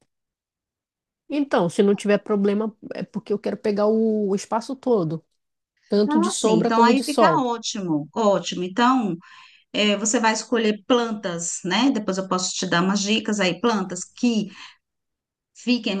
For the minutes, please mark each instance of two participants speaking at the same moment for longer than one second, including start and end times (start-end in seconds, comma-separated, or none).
6.1-7.5